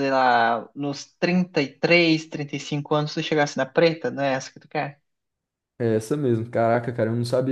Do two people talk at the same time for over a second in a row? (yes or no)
no